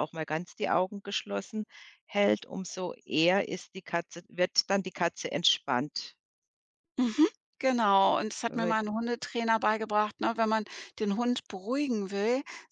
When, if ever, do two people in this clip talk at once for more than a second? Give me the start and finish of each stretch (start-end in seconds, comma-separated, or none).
none